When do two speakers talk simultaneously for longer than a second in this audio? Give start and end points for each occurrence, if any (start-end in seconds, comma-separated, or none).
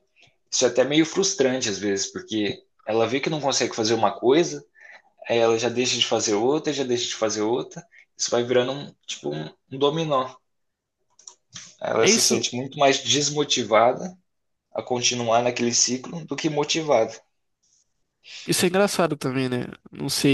none